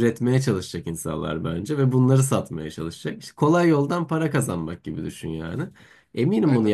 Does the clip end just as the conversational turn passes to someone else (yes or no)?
no